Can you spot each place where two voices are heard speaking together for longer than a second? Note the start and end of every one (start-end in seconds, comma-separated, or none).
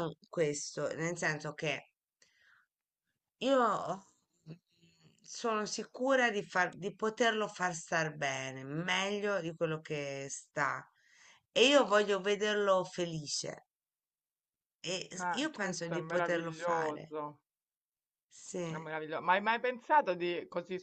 15.2-17.1